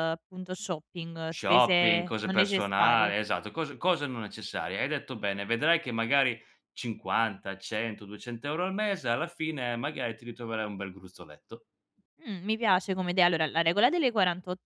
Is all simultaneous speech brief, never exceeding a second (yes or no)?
no